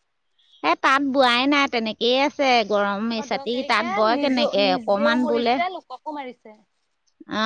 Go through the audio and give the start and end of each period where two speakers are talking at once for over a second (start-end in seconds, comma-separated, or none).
3.2-5.6